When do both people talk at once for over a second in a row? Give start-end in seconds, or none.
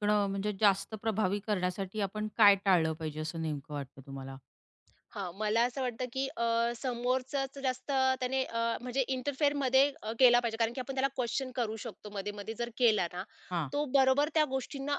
none